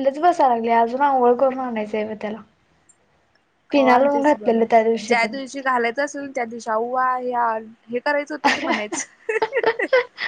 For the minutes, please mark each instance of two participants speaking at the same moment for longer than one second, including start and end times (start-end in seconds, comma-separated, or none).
3.7-5.2